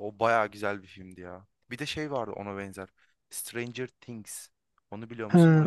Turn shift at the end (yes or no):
yes